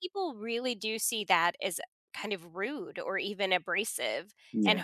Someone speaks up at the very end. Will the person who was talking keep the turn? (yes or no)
yes